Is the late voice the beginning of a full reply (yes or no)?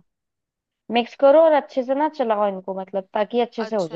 yes